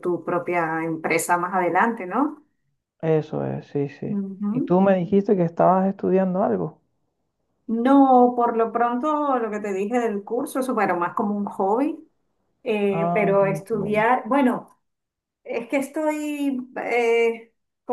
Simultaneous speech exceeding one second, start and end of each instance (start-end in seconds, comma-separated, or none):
12.9-14.1